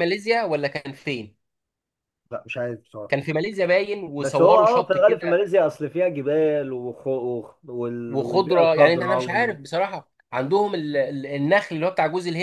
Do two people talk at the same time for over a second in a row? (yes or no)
yes